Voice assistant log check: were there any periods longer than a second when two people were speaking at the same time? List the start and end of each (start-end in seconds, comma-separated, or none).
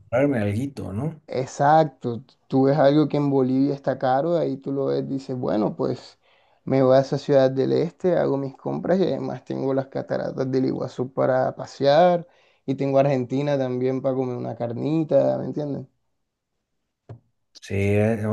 none